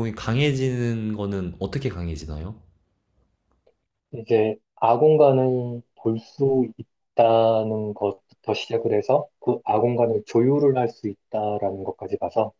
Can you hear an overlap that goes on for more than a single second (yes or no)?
no